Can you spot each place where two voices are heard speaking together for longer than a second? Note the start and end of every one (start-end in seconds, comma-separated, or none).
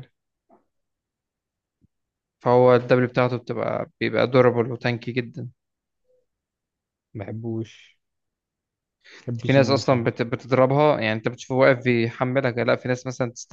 none